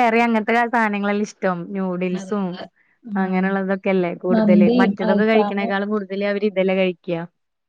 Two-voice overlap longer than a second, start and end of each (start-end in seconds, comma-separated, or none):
4.3-5.7